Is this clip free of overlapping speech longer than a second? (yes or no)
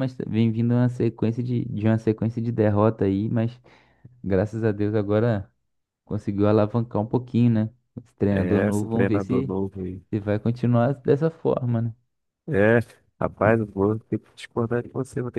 no